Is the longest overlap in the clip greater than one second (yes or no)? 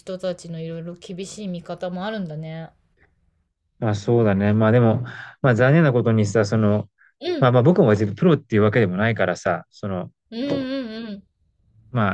no